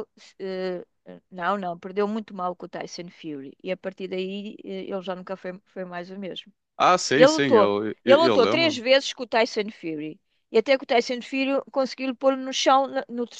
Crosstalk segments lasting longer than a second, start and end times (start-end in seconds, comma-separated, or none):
7.2-8.8